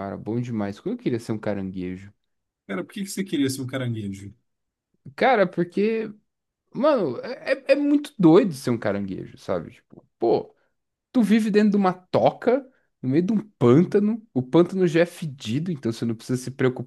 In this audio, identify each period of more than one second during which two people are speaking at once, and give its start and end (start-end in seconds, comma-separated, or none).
none